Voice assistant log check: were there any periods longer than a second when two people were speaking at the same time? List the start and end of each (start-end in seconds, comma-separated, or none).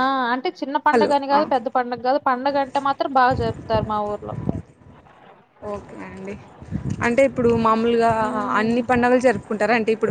none